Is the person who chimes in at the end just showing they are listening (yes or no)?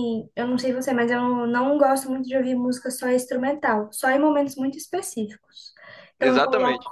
yes